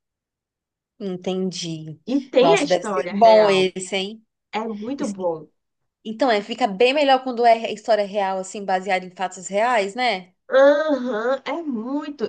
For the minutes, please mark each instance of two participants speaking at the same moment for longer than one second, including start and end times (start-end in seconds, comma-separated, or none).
2.4-3.7